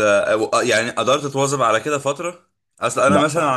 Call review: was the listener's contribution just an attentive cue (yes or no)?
yes